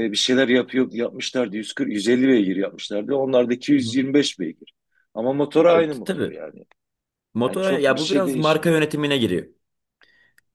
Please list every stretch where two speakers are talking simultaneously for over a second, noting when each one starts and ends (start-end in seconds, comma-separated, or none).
7.5-8.8